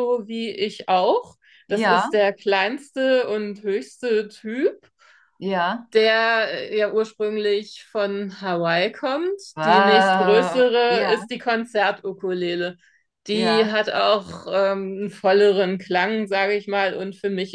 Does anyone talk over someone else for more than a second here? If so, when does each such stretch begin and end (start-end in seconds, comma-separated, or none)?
9.5-11.3